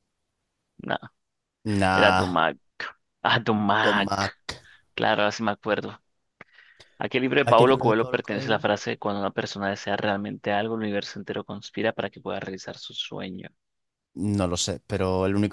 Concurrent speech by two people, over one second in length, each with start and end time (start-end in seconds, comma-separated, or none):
7.4-8.6